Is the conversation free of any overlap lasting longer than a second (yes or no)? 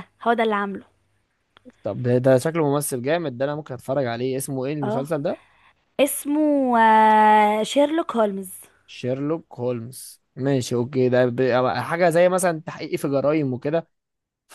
yes